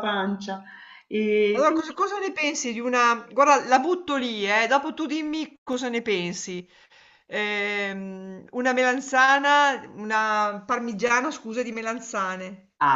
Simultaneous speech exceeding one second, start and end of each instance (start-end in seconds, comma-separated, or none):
none